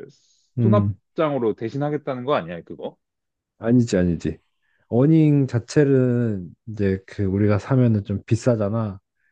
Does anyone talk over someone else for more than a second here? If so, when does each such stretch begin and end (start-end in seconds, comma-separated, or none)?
none